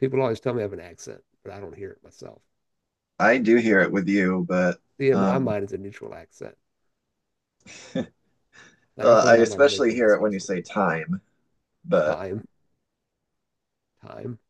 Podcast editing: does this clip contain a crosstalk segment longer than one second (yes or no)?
yes